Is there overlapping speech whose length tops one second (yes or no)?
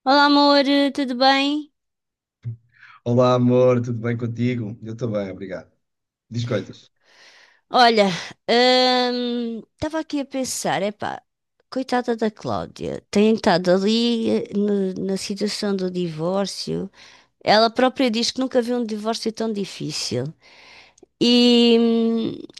no